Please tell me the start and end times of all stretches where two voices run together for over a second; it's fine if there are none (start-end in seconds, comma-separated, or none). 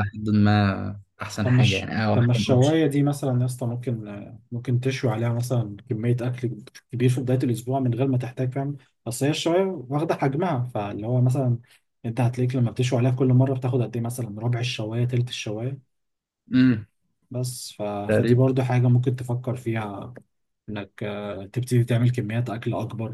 1.4-2.8